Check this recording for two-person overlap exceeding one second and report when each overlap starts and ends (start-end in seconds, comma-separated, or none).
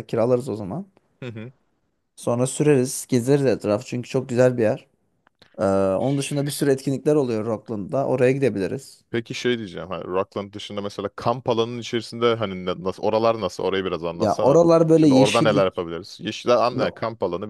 14.2-15.9